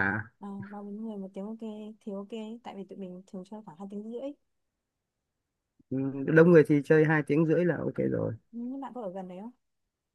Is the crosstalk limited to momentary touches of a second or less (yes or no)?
yes